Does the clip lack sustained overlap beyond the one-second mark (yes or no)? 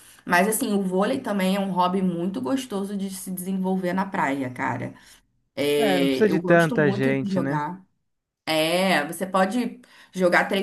no